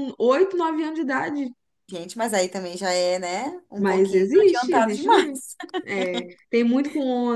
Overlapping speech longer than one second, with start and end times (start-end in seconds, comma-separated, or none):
3.8-5.4